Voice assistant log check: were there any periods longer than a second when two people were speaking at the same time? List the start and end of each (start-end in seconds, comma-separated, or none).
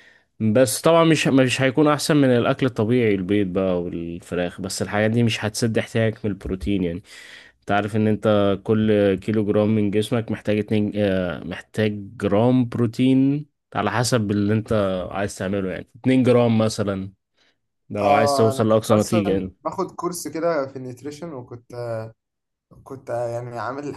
18.0-19.5